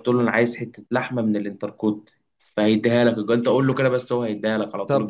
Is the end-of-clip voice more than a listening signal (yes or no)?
yes